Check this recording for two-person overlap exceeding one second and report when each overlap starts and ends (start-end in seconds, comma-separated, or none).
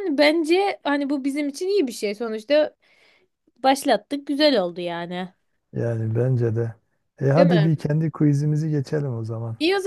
none